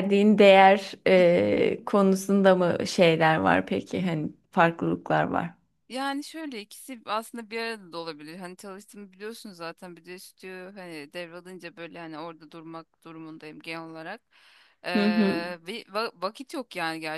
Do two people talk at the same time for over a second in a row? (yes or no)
no